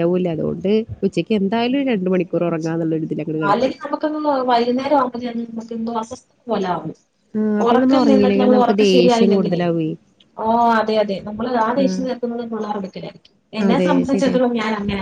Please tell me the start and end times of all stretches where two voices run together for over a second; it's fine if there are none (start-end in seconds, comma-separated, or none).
7.7-9.6